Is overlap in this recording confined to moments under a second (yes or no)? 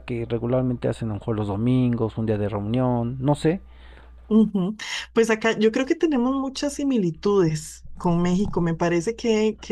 yes